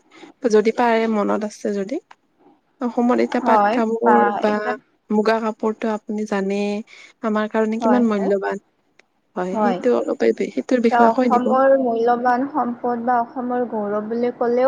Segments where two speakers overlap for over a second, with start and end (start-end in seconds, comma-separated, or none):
none